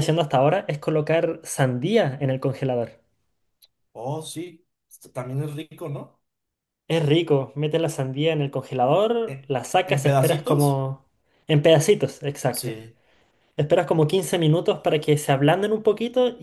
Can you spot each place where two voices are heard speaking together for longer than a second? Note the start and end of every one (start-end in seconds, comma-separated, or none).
9.2-10.8